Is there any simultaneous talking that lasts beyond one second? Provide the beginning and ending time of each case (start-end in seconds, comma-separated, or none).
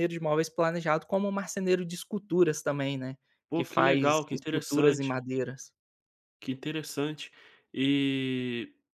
3.5-5.1